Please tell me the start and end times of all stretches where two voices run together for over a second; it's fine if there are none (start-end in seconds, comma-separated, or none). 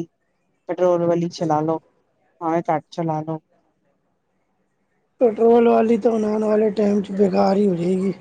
none